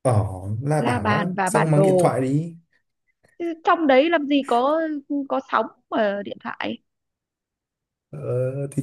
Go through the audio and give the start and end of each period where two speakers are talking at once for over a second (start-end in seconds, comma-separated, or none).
0.8-2.1